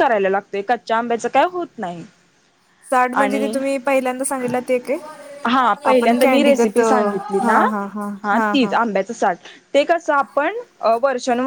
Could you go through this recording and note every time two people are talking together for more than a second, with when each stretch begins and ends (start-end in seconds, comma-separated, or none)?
5.9-7.6